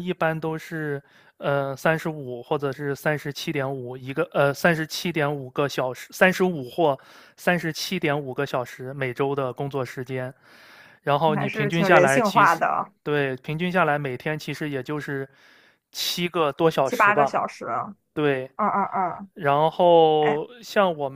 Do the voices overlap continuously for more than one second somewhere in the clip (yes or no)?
yes